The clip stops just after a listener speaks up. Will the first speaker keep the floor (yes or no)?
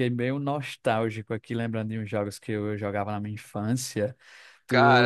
no